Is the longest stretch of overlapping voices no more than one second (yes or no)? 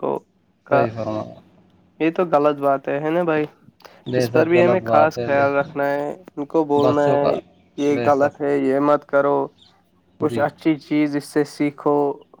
no